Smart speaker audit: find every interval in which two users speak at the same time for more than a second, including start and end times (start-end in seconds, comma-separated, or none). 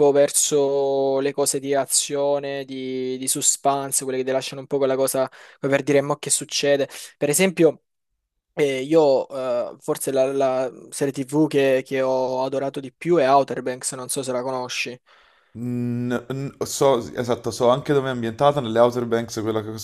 none